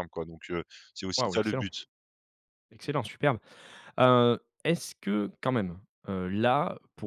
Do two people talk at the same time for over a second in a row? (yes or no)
no